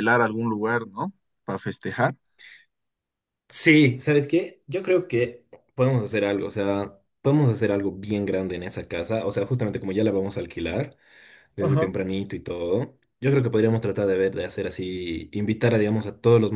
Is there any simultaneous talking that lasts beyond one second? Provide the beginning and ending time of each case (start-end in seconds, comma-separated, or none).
none